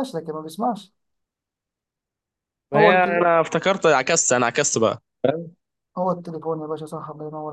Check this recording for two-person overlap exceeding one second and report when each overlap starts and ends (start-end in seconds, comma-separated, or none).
none